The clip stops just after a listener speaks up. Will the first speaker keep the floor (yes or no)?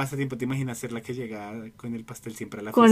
no